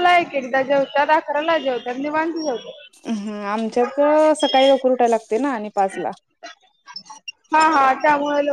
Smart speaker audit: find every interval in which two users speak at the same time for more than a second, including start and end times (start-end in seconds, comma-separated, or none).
none